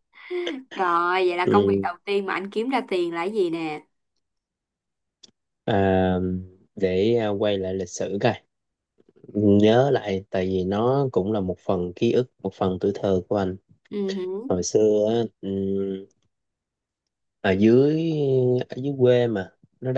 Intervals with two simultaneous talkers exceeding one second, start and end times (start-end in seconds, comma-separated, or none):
none